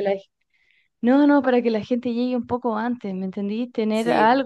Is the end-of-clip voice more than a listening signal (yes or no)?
no